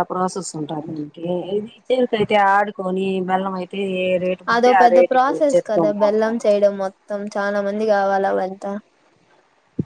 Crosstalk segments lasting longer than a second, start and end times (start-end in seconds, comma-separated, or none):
4.5-6.4